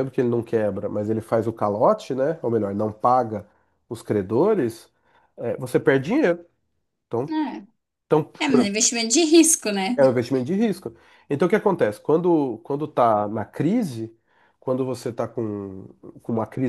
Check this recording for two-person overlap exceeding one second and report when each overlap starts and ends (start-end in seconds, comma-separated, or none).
none